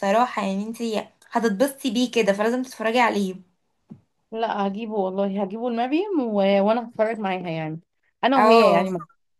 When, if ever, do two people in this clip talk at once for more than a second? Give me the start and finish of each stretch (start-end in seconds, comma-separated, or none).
none